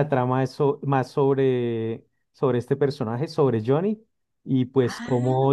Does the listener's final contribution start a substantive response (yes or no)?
no